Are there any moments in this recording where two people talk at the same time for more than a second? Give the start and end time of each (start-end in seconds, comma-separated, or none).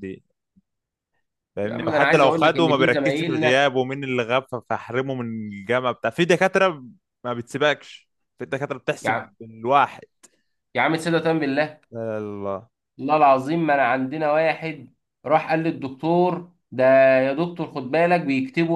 1.6-3.7